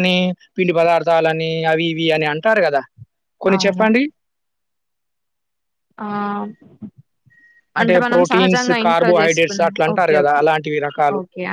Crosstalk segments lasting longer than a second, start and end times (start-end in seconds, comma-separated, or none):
8.1-10.4